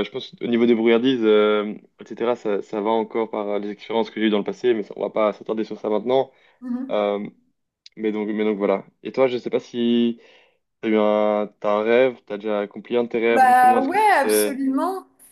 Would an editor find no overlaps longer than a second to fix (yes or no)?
no